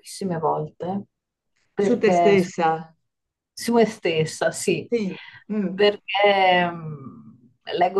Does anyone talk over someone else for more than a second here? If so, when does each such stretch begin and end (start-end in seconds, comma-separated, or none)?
none